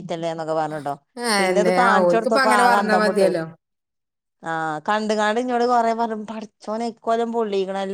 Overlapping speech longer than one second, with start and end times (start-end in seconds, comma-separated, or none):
1.4-3.3